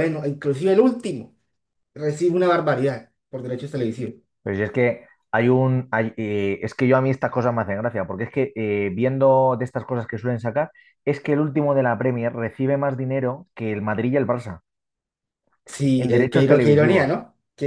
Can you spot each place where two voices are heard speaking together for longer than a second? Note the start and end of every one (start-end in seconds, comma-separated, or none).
16.0-17.2